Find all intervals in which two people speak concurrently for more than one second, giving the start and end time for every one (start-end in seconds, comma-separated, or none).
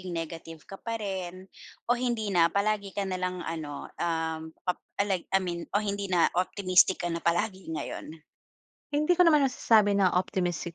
none